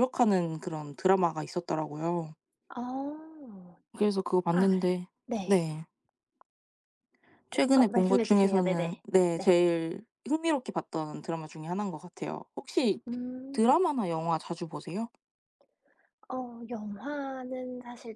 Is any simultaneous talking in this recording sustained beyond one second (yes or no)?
yes